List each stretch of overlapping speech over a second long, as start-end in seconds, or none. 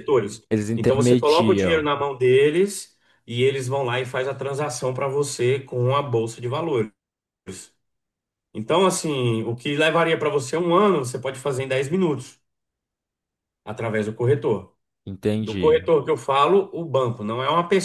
0.5-1.9